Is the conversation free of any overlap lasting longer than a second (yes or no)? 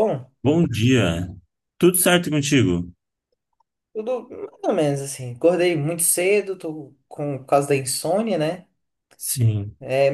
yes